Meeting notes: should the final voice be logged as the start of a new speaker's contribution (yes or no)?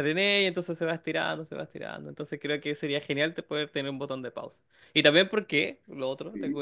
no